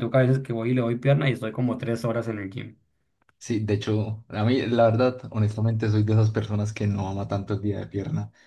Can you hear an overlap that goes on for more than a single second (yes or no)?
no